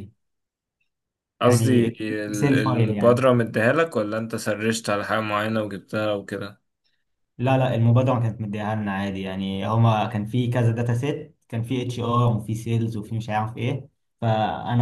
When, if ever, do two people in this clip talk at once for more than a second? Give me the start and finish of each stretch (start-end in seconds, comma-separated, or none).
1.4-3.2